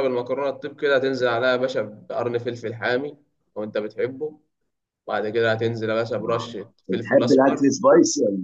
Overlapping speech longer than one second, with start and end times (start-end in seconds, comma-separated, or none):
6.3-7.7